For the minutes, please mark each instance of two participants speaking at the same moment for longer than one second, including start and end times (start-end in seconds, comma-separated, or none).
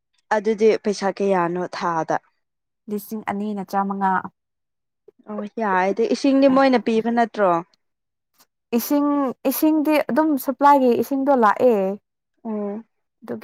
none